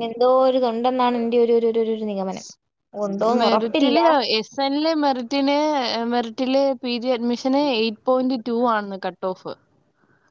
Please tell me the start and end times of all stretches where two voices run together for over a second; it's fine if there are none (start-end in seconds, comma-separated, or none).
none